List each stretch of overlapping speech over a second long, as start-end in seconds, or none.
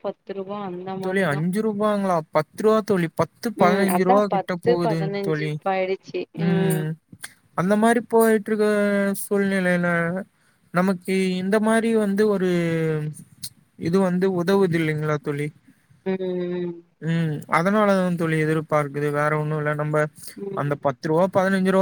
3.6-5.5